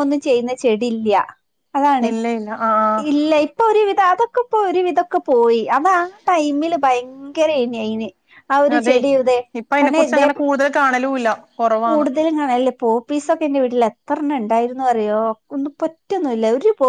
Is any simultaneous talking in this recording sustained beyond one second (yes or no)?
no